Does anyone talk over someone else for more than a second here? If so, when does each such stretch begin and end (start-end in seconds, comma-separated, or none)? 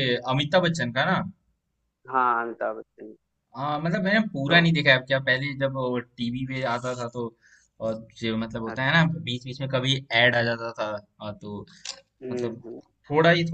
none